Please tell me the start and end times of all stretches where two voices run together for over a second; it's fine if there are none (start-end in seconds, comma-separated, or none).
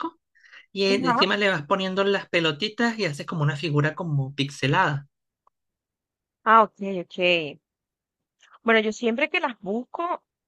none